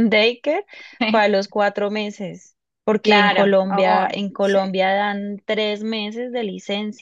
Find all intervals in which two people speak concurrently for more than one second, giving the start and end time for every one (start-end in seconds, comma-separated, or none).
3.0-4.8